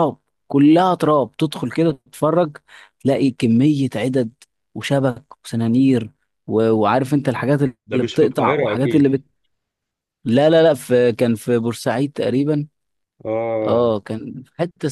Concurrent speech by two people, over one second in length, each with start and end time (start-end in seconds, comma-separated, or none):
7.9-9.1